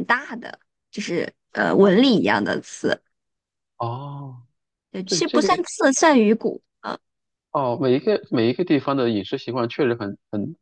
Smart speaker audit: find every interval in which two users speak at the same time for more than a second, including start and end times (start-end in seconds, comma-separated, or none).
none